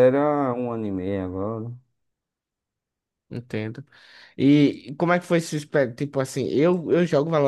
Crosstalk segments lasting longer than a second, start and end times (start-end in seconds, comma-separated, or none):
none